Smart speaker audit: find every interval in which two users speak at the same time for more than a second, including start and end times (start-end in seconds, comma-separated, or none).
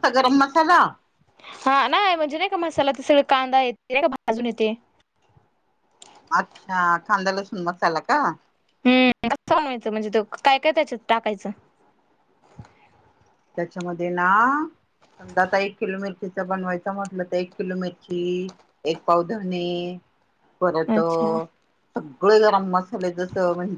none